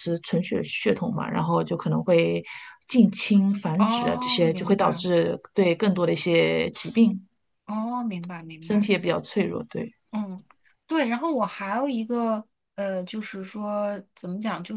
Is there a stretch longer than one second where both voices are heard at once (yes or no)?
yes